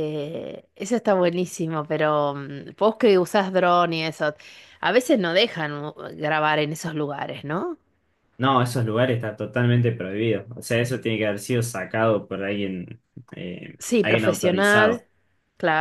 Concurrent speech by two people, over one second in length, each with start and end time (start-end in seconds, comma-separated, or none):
13.8-15.0